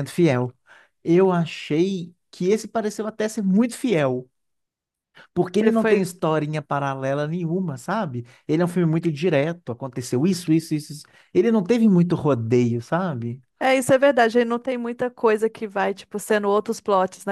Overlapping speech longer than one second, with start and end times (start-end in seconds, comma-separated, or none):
none